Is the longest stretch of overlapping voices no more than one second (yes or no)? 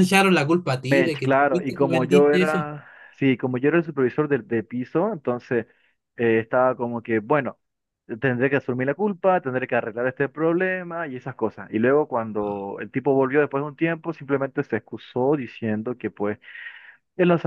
no